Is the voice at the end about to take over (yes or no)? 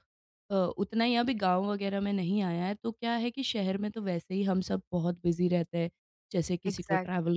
yes